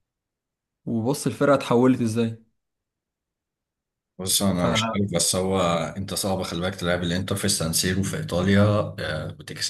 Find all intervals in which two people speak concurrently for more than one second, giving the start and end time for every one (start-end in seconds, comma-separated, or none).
none